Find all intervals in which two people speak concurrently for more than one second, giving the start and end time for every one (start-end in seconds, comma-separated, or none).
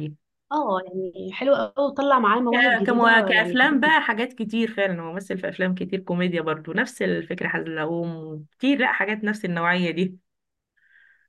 2.5-3.9